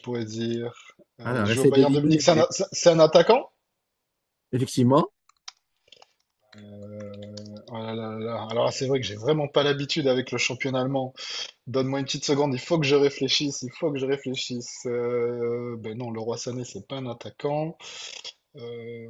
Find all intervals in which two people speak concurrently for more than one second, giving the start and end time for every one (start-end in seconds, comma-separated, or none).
1.2-2.5